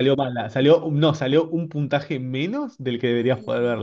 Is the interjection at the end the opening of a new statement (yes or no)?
yes